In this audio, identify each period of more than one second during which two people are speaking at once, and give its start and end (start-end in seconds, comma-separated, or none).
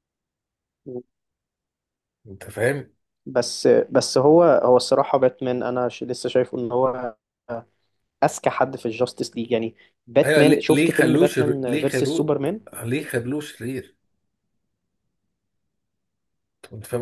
10.2-12.3